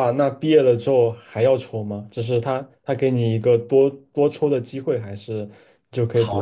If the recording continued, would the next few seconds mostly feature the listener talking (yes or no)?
yes